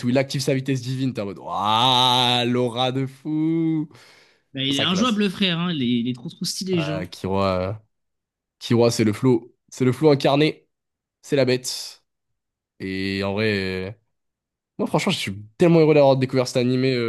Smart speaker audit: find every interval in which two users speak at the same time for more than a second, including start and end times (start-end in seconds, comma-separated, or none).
none